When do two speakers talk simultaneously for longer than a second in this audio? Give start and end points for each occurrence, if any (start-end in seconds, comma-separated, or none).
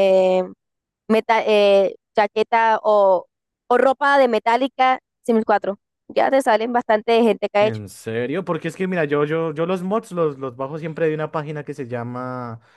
none